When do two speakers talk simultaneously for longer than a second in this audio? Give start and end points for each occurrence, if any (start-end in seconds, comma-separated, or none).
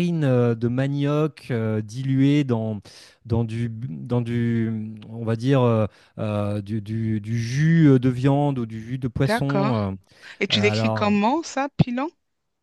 none